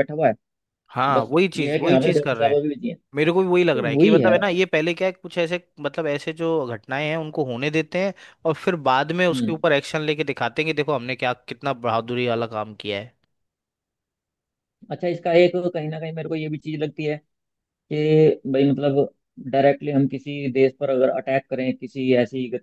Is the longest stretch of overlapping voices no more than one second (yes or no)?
no